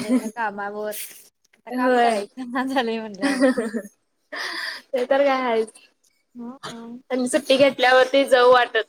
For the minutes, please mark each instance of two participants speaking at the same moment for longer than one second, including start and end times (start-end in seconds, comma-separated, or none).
none